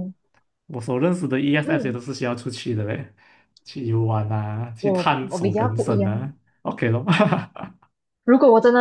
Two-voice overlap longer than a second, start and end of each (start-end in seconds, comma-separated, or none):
4.8-6.3